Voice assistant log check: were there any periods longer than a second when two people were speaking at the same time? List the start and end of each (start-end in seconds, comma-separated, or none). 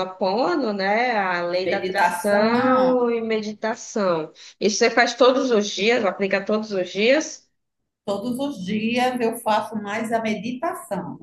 1.6-3.0